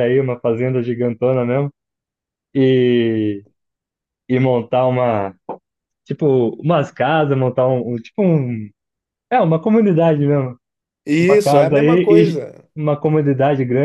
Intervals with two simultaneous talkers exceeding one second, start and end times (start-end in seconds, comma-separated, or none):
11.2-12.7